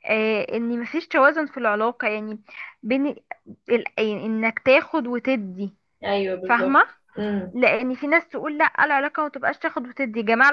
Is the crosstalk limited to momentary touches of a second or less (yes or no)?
yes